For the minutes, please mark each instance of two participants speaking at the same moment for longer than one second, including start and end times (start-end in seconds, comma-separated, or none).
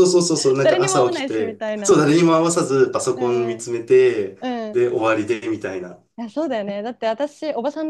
0.6-2.0